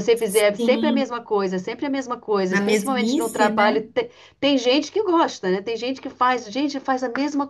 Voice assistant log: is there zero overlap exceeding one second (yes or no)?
no